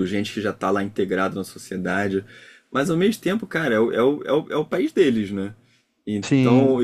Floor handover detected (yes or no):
no